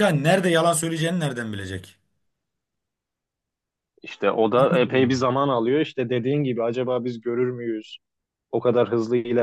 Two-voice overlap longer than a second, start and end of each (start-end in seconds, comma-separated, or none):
none